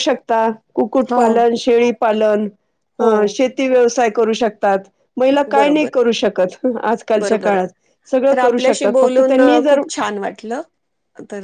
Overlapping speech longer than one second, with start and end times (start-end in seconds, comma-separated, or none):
8.3-9.8